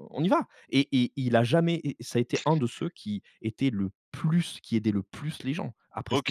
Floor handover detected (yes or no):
yes